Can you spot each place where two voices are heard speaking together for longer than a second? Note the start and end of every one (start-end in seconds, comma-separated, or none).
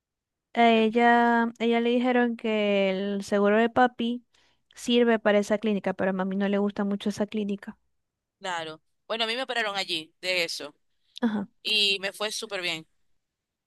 none